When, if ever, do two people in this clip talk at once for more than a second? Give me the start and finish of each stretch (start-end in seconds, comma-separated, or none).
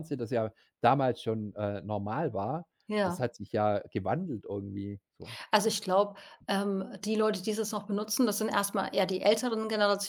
none